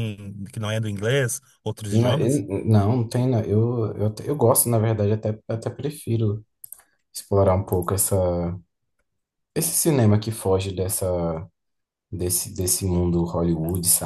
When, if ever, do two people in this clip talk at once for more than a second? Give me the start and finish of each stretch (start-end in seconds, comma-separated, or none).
none